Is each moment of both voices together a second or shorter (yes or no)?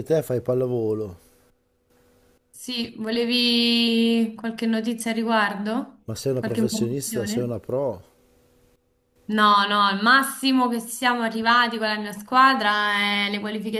no